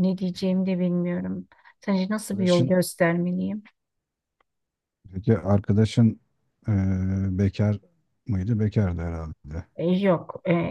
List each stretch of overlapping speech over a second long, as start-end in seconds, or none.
none